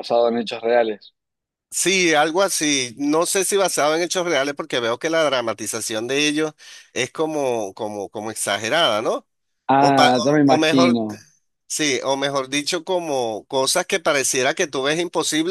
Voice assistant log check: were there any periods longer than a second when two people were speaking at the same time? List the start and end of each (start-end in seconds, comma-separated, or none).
9.8-11.0